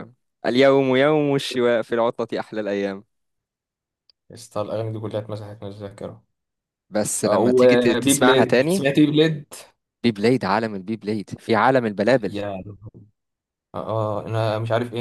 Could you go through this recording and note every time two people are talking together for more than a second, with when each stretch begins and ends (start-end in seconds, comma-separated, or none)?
7.2-8.9